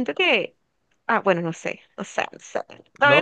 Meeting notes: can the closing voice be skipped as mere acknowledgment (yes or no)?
no